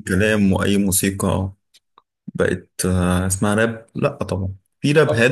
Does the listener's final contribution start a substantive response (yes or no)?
no